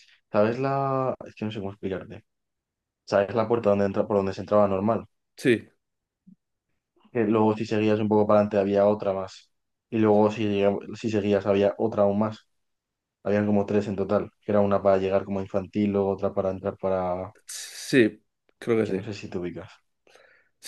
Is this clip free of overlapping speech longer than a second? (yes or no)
yes